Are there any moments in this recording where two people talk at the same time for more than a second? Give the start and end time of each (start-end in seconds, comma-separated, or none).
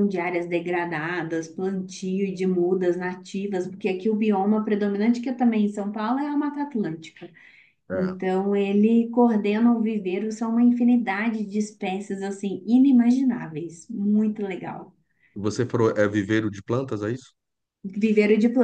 none